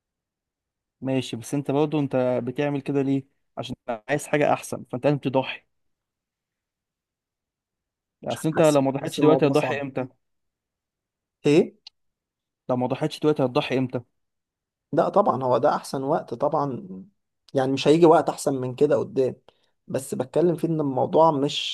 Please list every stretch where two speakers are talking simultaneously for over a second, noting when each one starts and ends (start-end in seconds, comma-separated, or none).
8.3-9.8